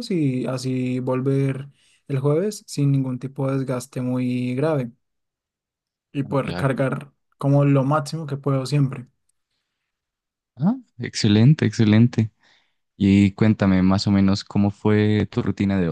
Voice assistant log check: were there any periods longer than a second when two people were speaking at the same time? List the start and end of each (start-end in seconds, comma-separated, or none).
none